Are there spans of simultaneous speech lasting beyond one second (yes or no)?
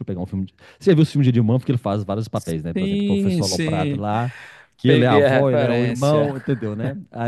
yes